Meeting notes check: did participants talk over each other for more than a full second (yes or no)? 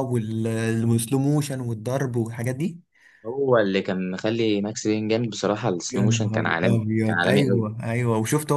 yes